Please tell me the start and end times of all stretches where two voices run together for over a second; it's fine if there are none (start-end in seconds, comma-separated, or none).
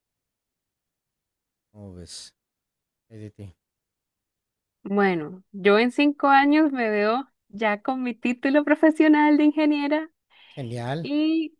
none